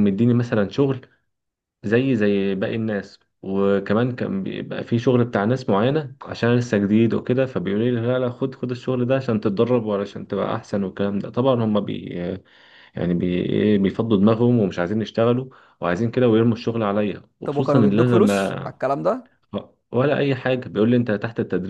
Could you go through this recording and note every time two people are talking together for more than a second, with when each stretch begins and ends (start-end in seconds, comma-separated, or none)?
17.4-18.7